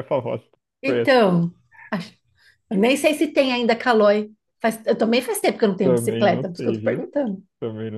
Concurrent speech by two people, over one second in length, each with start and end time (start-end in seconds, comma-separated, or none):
5.8-7.0